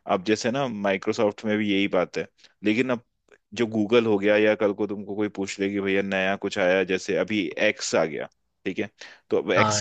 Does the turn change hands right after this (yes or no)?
no